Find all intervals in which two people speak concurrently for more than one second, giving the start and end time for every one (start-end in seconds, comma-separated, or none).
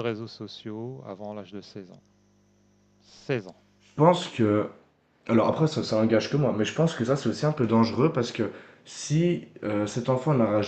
none